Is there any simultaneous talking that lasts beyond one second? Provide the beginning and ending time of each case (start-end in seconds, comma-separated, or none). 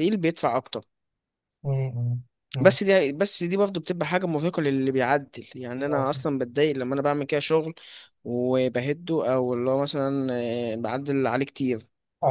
none